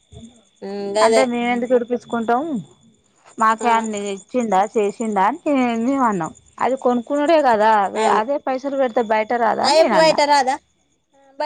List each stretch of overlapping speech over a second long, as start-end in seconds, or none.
none